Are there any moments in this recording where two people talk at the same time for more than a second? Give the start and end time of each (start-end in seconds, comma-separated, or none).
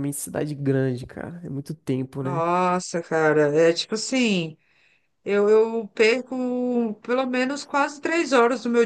none